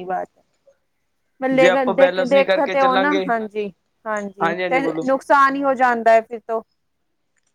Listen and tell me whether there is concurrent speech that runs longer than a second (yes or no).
yes